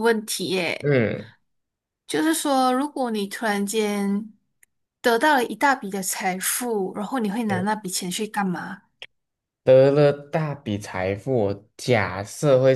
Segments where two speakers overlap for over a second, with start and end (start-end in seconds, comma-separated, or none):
none